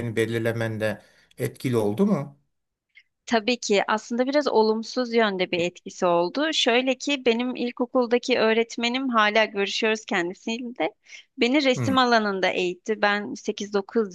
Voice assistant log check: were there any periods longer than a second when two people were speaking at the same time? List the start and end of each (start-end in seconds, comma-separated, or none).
none